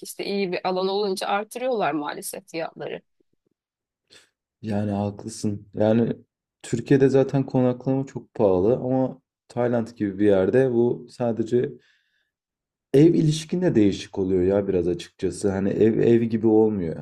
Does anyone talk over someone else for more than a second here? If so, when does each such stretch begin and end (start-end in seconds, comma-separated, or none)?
none